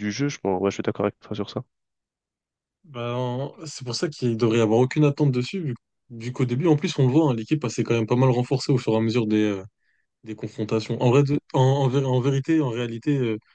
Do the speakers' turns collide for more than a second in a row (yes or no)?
no